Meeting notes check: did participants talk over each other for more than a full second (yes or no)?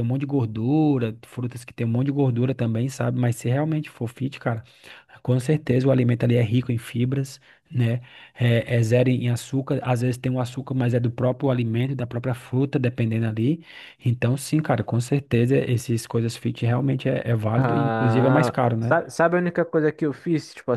yes